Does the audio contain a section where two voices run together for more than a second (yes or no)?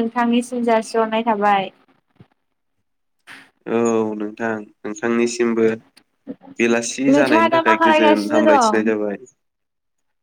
yes